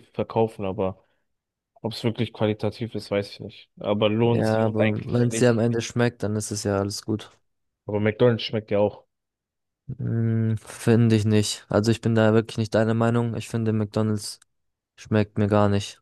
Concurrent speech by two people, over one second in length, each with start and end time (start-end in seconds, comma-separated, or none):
4.2-5.7